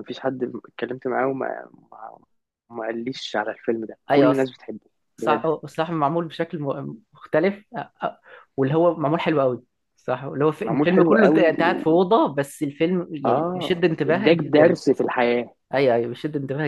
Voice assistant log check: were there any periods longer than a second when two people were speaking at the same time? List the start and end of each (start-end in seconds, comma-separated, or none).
10.6-12.0, 13.3-14.8